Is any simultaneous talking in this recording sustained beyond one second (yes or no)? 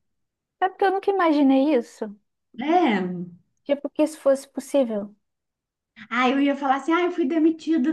no